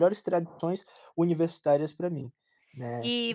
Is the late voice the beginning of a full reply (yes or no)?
yes